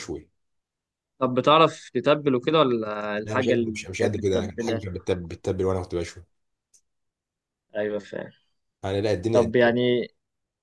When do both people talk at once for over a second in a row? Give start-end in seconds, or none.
3.2-4.8